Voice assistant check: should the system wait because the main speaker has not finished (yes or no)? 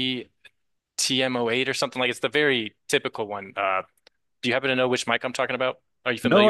no